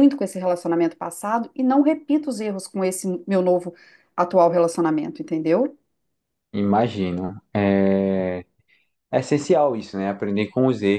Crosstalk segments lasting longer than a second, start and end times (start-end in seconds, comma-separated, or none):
none